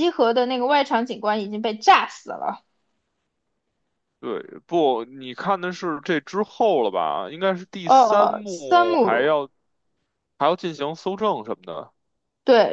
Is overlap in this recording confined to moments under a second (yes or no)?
no